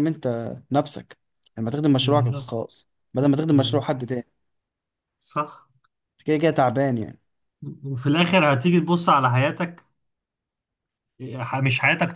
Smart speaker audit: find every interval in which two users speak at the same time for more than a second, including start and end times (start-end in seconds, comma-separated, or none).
none